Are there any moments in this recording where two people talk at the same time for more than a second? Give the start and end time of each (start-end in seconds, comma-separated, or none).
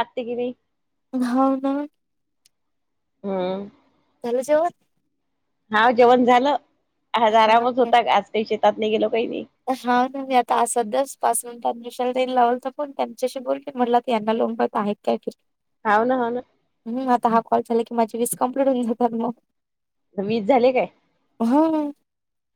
none